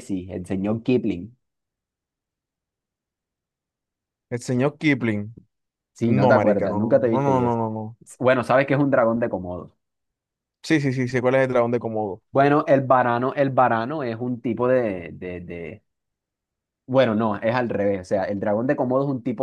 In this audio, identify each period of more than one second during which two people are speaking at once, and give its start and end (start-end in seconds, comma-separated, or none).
6.1-7.6